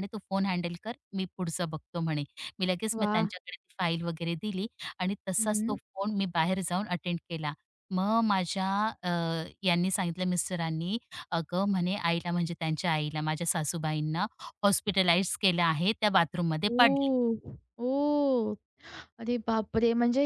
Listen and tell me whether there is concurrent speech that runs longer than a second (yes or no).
no